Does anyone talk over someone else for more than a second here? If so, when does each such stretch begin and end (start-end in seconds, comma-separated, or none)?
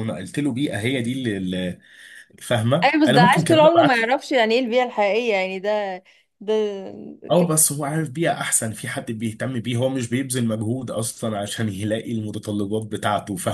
2.8-4.2